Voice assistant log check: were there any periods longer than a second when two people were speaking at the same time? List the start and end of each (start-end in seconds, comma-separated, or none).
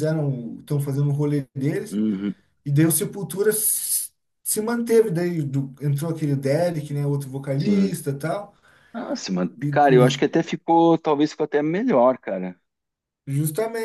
none